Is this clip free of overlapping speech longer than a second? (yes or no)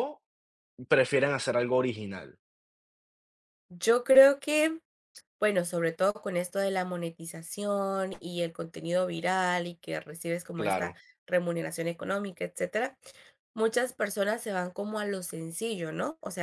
yes